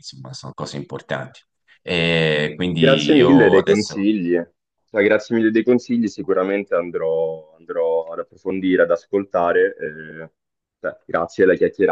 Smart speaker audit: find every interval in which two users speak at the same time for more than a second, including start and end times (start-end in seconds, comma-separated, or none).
2.8-4.1